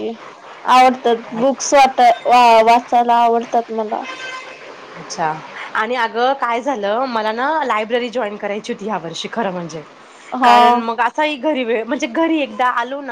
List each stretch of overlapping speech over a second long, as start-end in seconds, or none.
none